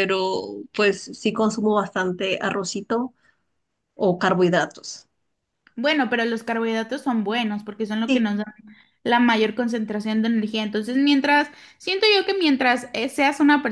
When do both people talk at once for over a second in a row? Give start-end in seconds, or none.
none